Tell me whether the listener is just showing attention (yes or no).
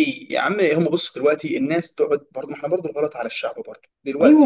no